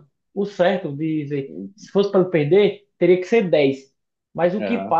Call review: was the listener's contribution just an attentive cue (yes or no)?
yes